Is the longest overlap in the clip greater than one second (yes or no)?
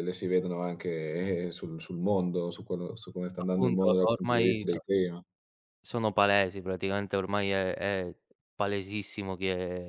yes